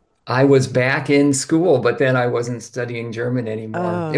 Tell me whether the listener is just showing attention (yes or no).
yes